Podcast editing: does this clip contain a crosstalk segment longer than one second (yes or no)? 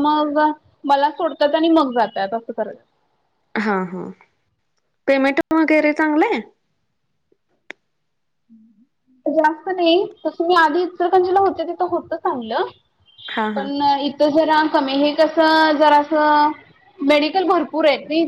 no